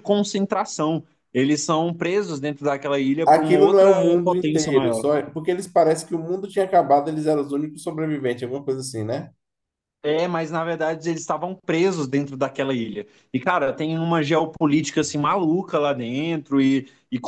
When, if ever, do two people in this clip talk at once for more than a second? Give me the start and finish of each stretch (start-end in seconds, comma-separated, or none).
3.2-5.0